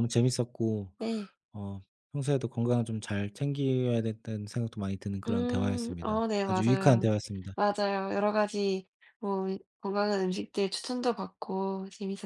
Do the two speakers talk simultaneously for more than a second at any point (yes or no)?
yes